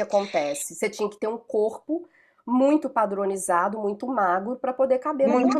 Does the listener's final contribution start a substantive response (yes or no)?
yes